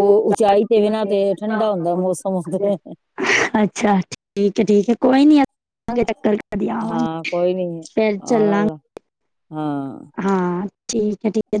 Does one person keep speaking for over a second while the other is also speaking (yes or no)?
no